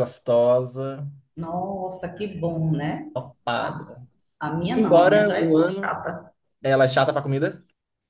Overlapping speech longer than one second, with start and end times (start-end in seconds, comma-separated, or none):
4.8-6.0